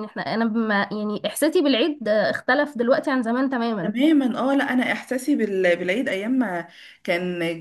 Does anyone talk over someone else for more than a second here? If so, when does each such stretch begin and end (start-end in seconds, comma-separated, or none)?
none